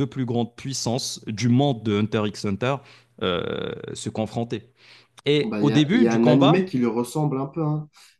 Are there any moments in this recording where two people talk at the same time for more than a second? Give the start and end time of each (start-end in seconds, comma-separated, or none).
5.4-6.7